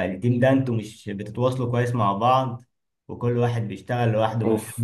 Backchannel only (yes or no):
yes